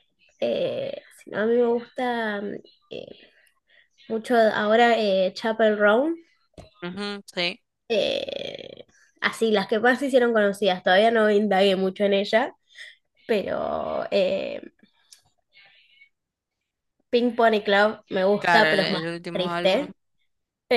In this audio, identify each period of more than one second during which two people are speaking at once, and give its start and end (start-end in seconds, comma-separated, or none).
18.4-19.9